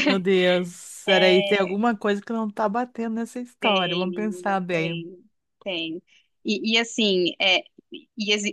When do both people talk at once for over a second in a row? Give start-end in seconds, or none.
3.6-5.0